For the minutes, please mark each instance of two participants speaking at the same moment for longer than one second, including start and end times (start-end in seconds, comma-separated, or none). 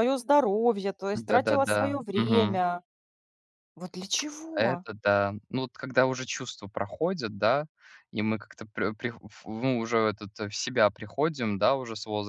1.3-2.6